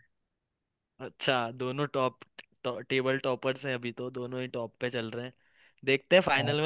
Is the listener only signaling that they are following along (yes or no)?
yes